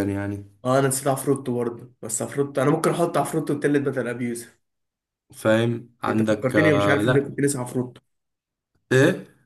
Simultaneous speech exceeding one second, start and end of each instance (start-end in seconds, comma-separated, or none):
6.1-7.4